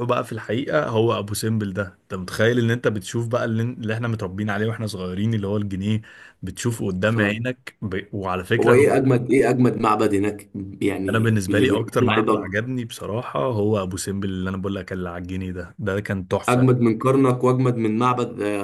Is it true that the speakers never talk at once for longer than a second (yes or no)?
no